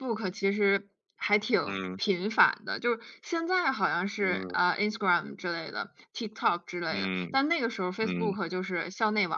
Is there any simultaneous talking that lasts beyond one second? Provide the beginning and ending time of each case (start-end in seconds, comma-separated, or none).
none